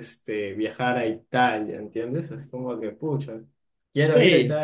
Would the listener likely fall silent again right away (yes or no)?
yes